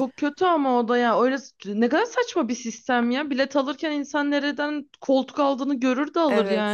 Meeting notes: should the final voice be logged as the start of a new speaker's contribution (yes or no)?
yes